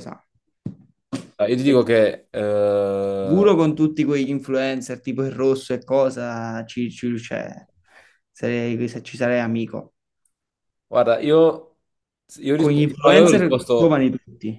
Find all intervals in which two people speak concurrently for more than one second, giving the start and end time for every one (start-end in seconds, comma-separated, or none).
12.6-14.1